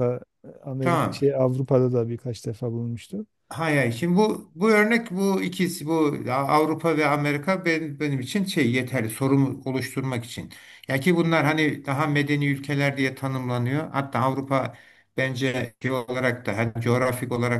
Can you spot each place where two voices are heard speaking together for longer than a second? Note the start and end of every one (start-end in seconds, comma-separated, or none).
none